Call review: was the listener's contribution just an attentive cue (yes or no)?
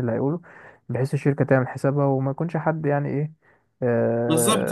no